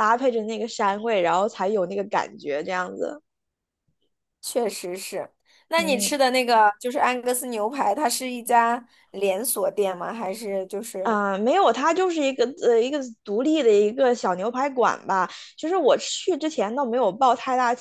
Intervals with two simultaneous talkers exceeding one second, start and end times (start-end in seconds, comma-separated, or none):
none